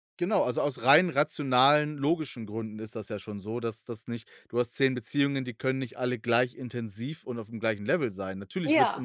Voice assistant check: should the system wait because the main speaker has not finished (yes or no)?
yes